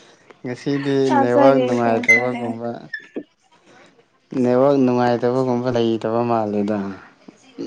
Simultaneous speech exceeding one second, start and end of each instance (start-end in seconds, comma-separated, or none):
1.1-2.6